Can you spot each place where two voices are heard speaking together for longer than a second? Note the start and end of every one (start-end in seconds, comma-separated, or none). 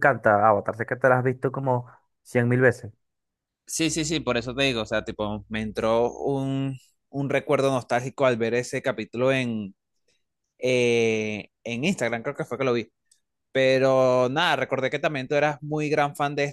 none